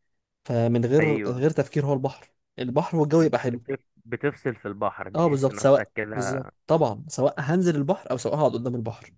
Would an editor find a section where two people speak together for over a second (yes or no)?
yes